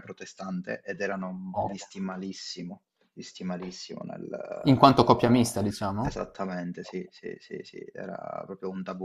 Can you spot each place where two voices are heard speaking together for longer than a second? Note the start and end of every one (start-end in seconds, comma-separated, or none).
none